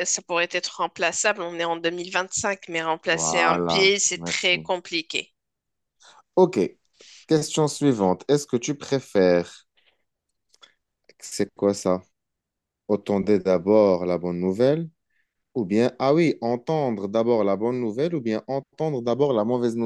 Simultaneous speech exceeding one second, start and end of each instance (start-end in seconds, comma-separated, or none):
3.1-4.6